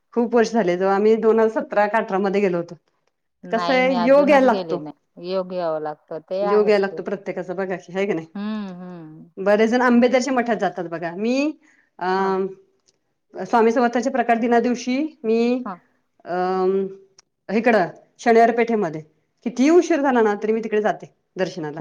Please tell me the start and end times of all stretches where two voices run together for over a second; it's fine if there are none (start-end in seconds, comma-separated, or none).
3.5-4.8